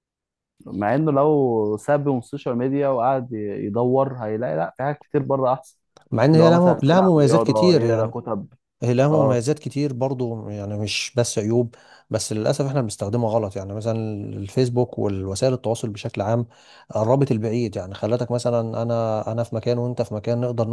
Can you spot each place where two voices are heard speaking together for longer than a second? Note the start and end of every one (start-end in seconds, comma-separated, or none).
6.3-8.1